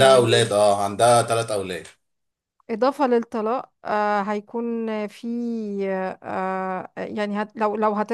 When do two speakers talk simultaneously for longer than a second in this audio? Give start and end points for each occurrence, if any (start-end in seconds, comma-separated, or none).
none